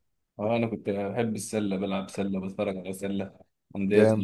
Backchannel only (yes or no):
yes